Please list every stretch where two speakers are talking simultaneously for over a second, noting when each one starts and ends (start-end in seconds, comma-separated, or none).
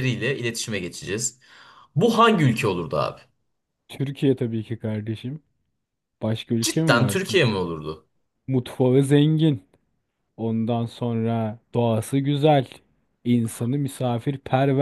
none